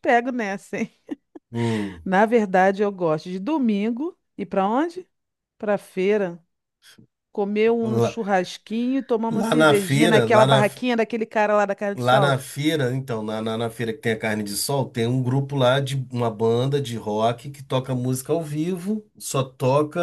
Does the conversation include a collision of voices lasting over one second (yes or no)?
yes